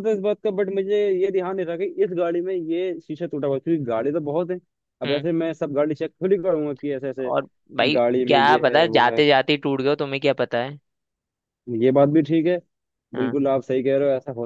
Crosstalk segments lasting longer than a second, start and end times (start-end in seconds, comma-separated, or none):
7.2-9.2